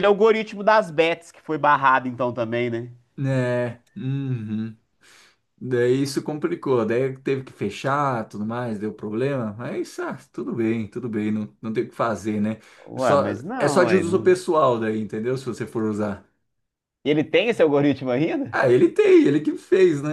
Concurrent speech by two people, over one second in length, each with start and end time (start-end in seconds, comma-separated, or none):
12.9-14.3